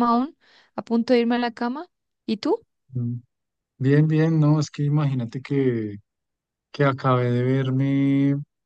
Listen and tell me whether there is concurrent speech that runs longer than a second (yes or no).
no